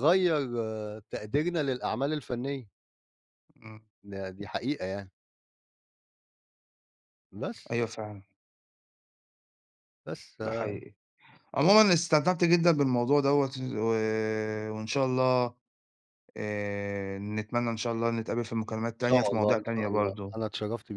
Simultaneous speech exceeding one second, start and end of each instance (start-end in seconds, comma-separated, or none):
19.0-20.4